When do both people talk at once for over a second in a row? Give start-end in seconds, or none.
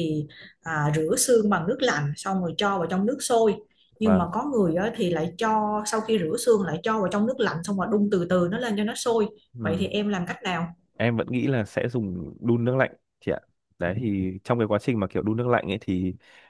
none